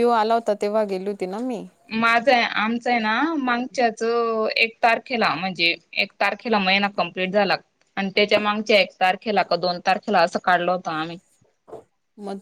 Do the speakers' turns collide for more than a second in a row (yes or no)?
no